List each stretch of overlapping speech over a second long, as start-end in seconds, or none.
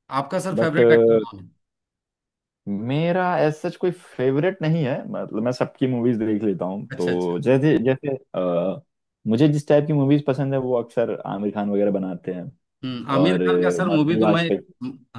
13.1-14.5